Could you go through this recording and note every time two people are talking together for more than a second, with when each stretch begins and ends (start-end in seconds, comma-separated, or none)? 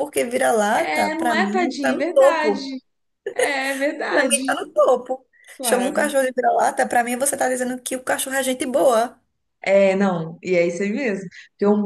0.7-2.7